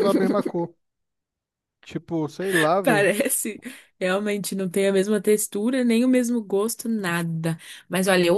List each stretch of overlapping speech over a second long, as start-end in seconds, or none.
none